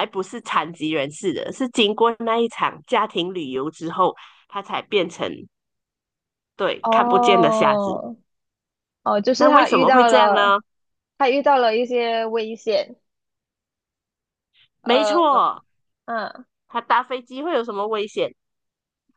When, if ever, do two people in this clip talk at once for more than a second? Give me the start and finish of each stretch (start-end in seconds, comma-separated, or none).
6.8-8.0, 9.3-10.6